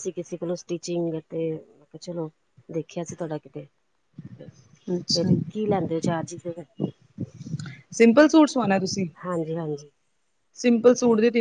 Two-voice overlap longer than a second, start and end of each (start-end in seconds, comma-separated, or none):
none